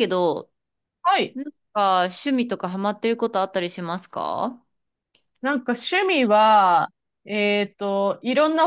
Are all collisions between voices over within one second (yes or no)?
yes